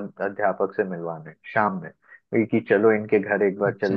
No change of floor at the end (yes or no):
yes